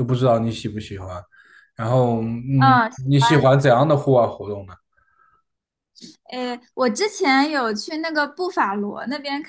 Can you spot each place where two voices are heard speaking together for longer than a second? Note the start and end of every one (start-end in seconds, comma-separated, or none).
none